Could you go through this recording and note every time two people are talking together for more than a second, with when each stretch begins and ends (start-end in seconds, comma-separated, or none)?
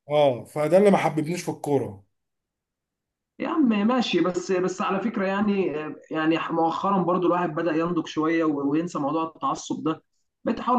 none